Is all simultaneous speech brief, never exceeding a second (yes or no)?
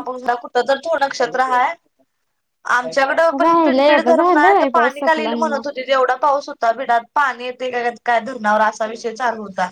no